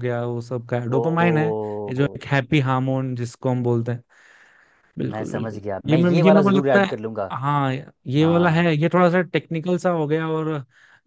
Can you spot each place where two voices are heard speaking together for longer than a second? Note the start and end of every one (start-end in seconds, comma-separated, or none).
5.0-7.0